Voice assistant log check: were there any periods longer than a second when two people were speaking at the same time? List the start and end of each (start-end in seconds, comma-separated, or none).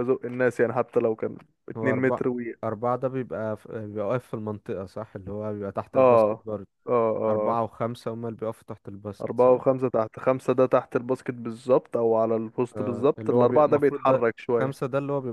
12.8-14.8